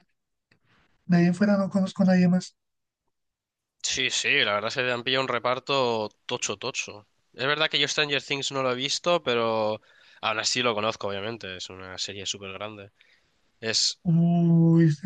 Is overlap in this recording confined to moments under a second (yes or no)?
yes